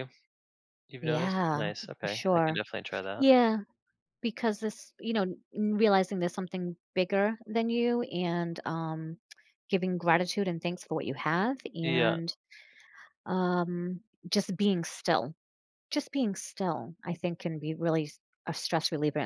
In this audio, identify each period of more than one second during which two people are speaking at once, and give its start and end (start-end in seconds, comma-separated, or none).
1.0-2.6